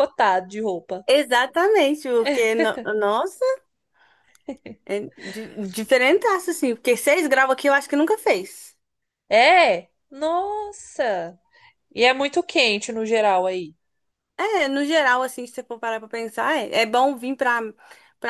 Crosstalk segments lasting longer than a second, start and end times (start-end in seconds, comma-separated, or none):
none